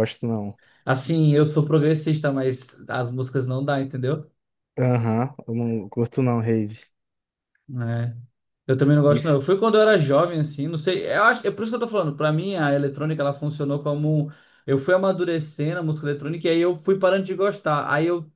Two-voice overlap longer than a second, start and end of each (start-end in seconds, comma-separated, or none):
none